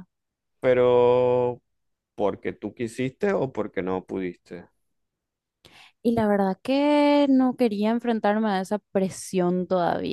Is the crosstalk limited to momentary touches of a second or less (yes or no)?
yes